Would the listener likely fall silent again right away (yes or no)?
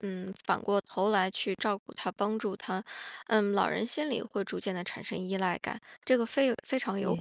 yes